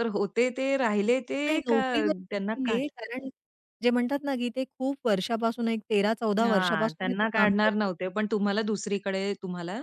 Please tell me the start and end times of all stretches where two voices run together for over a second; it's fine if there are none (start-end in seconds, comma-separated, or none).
6.4-7.9